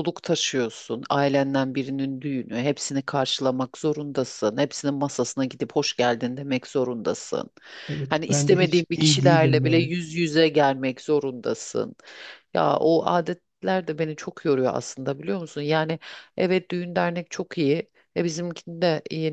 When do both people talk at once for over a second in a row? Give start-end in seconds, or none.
8.1-9.9